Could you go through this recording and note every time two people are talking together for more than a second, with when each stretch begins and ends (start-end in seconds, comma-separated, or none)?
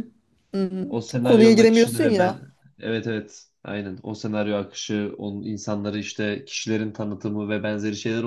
1.2-2.5